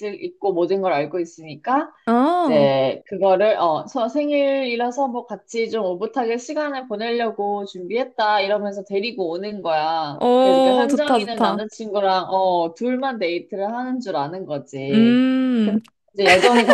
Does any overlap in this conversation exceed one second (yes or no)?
yes